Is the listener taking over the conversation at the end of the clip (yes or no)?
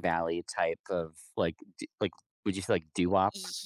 yes